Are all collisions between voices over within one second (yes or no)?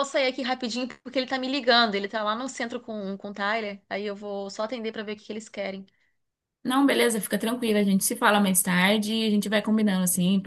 yes